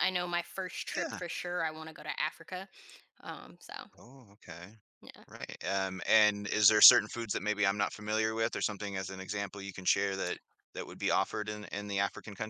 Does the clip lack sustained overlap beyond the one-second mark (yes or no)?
yes